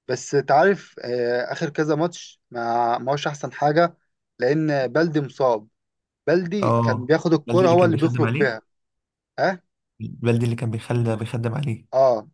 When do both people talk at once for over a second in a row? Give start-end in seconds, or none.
6.6-8.6